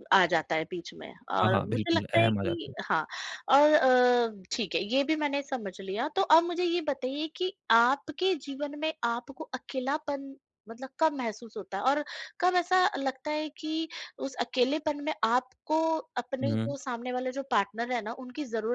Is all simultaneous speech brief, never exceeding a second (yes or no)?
no